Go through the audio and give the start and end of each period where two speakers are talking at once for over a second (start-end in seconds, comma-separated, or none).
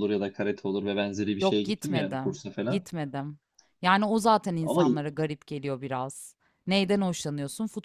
1.4-2.9